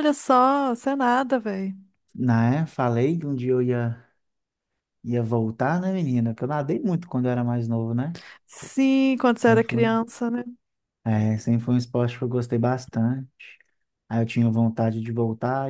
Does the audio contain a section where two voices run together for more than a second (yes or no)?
no